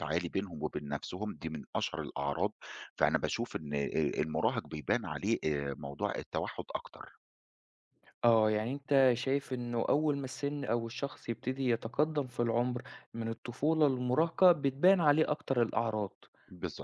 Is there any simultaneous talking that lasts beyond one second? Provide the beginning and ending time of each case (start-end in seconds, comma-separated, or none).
none